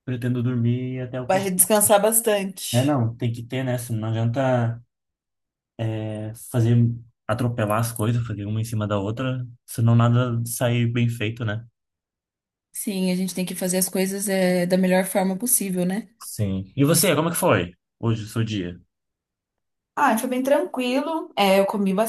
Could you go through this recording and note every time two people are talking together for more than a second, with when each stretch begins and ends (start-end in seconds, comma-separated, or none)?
none